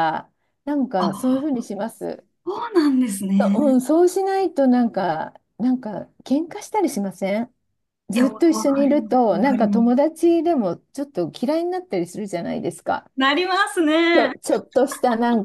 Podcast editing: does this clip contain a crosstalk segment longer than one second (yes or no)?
yes